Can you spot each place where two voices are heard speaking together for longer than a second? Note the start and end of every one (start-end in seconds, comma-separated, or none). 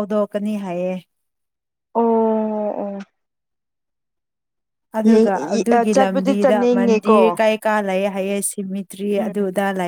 5.7-7.2